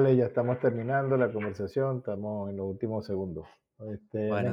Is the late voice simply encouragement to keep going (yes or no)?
yes